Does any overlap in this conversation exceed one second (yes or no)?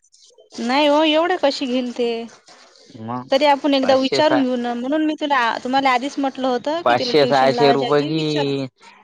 yes